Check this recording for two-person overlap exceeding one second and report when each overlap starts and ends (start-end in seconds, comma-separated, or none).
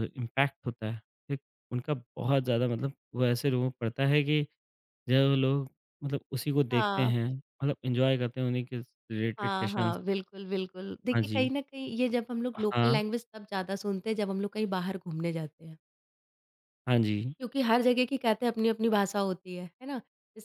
none